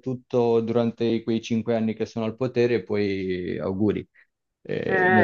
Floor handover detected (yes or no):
yes